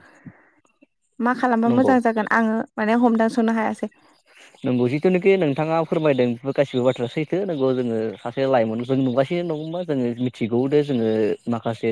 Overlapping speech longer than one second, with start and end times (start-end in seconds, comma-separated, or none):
none